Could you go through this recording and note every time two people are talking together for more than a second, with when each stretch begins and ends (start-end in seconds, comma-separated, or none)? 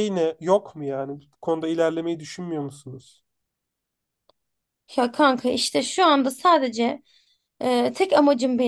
none